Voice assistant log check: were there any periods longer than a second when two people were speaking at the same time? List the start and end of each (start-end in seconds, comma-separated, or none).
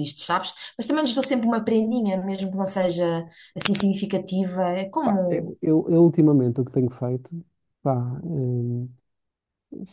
none